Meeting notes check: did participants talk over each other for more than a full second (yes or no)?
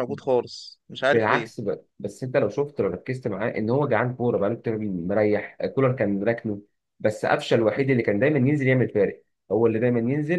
no